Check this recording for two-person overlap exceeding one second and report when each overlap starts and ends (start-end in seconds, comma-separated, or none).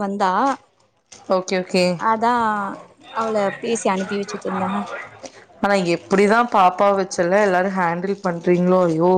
none